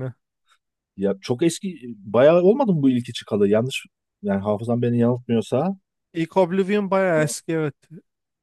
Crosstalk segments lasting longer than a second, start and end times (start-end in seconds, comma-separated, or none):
none